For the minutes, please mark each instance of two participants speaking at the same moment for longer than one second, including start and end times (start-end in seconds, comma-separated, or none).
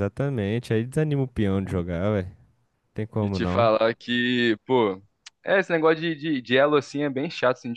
none